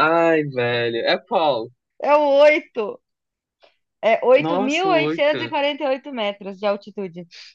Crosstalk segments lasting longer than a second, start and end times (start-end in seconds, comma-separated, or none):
4.3-5.5